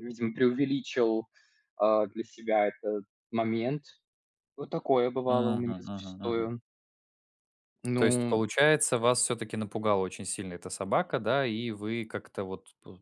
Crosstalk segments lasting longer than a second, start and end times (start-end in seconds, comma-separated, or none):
5.3-6.5